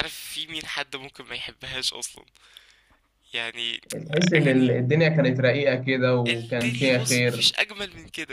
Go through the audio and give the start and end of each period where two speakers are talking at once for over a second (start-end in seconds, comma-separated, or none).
6.3-7.5